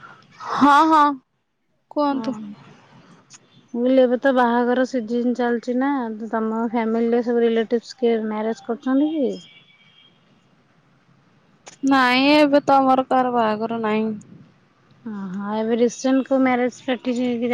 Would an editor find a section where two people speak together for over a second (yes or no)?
no